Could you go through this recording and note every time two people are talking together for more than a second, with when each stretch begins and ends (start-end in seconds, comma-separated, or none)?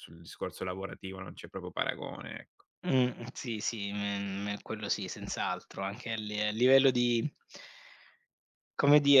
none